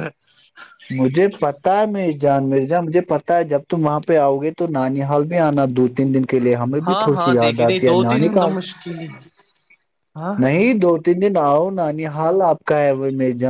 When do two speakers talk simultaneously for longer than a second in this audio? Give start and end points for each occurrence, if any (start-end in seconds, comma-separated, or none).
6.9-8.5